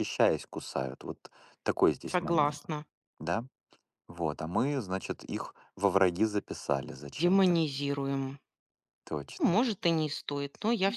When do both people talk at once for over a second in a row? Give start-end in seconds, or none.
none